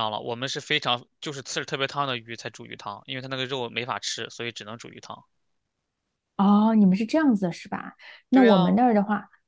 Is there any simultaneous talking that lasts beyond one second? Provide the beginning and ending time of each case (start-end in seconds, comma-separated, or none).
none